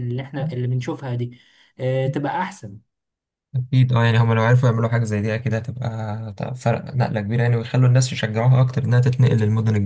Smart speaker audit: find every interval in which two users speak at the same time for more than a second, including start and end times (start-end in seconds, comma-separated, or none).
none